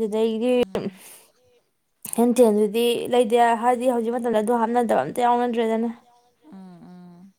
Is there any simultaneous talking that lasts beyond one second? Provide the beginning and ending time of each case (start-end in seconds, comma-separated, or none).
3.0-5.9